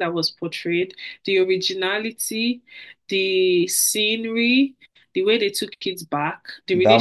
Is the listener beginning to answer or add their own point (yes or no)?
no